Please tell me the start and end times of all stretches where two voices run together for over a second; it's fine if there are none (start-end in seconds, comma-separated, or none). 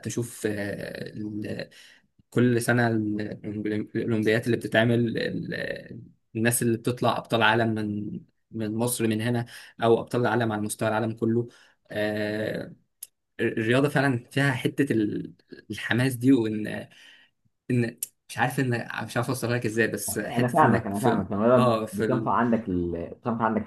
20.2-22.3